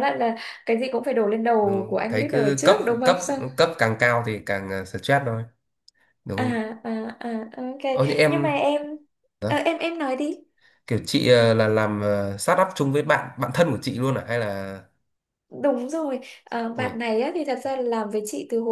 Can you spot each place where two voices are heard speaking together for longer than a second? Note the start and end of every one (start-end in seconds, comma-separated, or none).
1.6-3.4